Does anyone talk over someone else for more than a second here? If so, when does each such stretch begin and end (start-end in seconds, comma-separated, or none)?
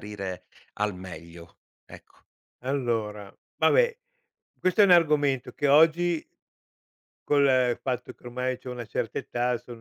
none